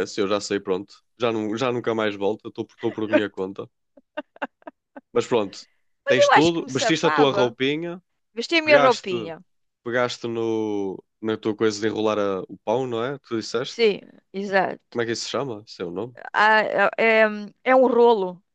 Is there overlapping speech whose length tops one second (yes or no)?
yes